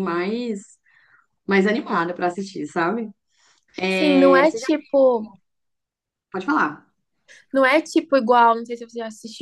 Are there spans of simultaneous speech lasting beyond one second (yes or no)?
no